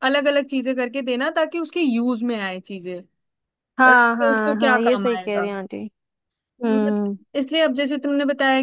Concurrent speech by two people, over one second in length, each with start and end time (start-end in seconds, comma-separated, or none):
3.9-5.5